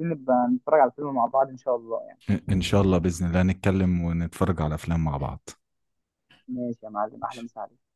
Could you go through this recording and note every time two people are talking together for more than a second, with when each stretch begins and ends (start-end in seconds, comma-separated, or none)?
none